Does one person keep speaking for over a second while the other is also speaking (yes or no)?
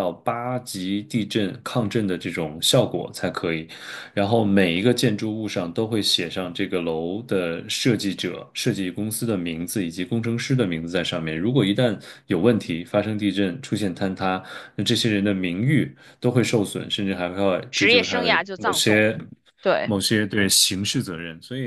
yes